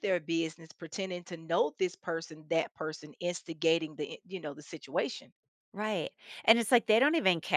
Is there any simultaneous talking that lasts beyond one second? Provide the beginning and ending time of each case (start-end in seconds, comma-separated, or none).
none